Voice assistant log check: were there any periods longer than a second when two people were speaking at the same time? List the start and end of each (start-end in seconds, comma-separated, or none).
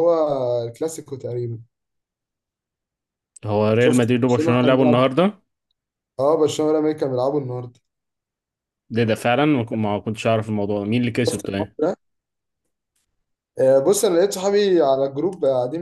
3.8-5.0